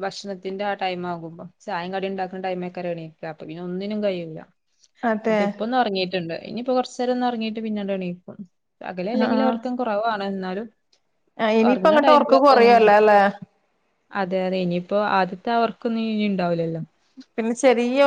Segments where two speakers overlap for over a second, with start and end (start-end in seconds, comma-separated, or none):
11.7-13.1